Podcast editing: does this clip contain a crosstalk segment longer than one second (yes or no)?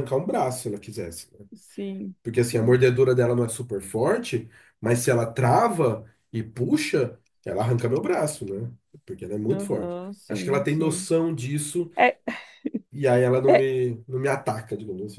yes